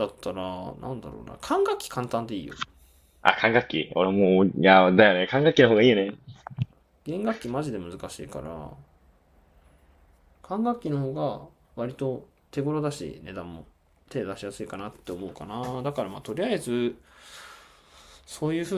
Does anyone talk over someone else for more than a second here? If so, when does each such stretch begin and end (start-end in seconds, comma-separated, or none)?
none